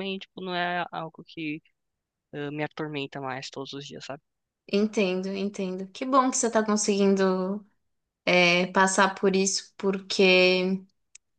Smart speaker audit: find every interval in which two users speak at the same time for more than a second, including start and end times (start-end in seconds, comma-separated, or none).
none